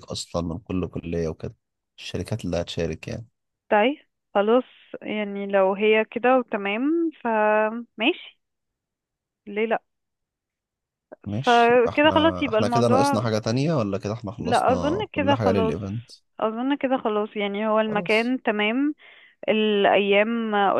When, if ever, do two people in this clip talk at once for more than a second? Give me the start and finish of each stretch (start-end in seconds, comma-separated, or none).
11.4-13.3, 14.4-15.8